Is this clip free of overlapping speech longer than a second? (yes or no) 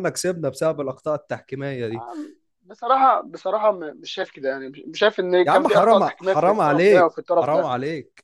no